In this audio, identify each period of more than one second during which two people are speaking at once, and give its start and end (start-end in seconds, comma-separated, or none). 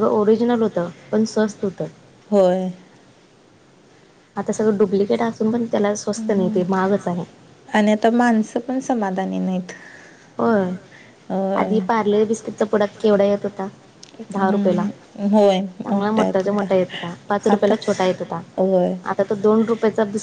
14.4-17.7